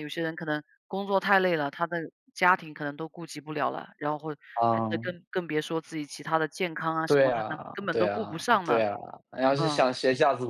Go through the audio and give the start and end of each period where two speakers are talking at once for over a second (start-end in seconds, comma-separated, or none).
7.1-8.9